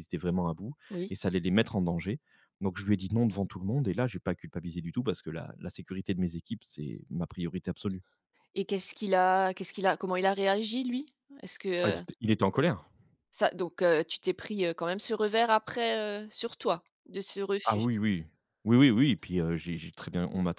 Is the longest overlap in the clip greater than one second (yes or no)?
no